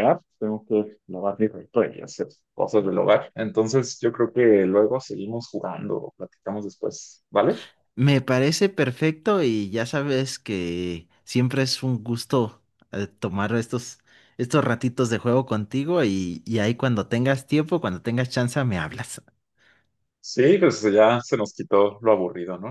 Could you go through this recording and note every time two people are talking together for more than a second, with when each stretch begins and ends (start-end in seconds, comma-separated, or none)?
none